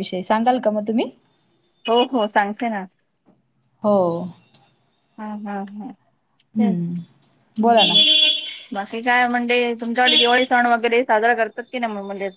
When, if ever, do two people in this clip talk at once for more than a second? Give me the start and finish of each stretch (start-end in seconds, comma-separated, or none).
none